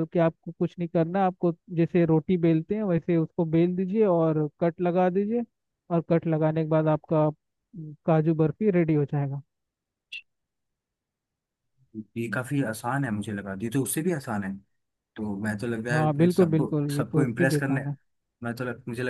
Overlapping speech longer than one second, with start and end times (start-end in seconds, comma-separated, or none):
15.9-17.8